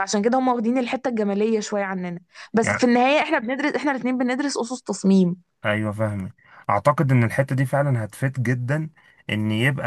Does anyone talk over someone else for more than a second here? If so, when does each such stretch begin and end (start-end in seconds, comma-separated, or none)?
none